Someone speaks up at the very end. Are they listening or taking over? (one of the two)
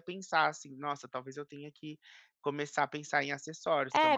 taking over